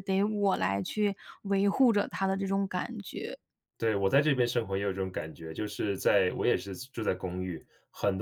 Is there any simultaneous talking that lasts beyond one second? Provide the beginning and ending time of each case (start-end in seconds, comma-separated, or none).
none